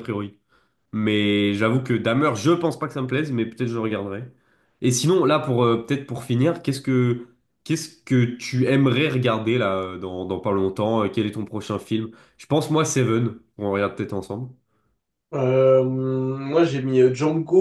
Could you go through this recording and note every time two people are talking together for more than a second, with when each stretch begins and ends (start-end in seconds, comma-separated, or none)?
none